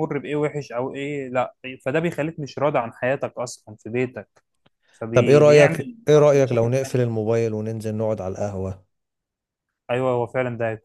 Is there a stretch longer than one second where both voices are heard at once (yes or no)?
yes